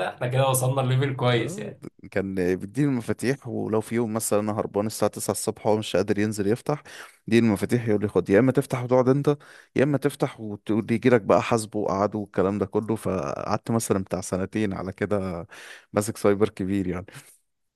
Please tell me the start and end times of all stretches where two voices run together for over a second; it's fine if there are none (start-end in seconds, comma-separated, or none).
none